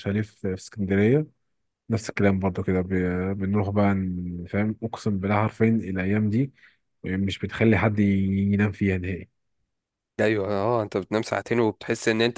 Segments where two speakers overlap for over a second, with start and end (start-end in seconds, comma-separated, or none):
none